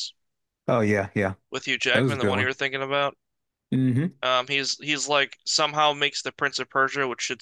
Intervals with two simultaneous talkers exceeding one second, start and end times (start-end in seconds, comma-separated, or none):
none